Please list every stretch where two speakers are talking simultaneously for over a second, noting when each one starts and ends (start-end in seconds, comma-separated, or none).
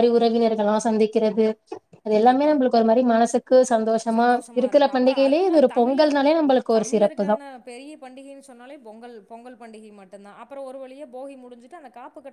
4.2-6.1